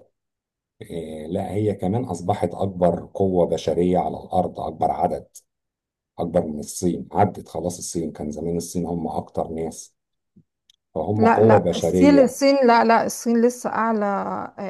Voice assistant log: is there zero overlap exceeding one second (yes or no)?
no